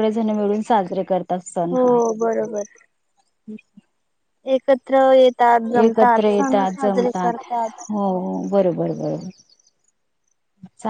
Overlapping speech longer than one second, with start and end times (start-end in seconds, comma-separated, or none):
5.8-7.4